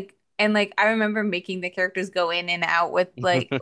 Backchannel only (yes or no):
yes